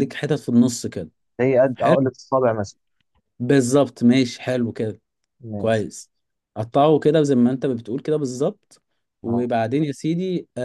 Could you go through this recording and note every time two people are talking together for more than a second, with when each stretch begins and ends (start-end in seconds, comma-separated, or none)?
none